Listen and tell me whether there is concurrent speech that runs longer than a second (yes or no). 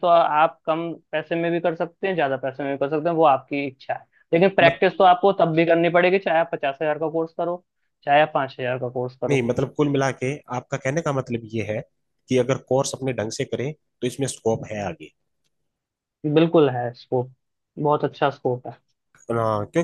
no